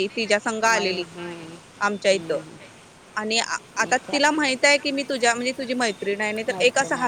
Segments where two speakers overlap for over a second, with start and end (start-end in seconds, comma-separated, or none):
none